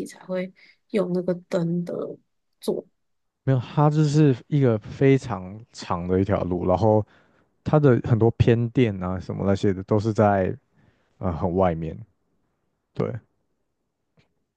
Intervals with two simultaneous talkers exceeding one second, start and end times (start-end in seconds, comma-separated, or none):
none